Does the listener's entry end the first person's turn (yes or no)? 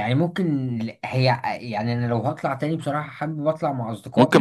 yes